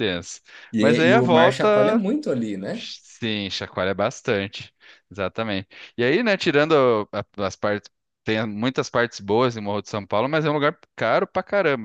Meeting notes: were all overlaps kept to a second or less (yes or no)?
no